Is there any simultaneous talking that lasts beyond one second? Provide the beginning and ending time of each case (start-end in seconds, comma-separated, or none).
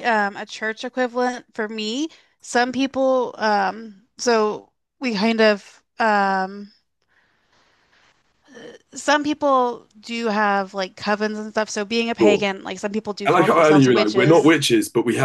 13.2-14.5